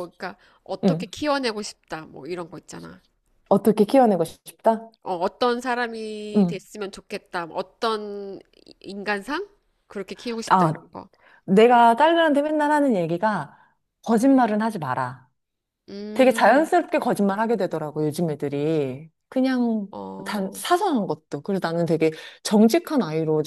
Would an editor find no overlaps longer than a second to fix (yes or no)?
yes